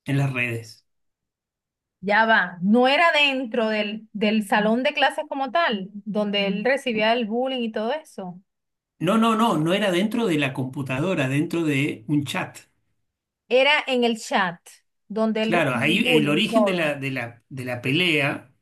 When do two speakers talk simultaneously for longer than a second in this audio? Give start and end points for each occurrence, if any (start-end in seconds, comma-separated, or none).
15.4-16.9